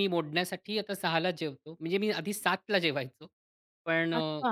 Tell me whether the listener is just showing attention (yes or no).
yes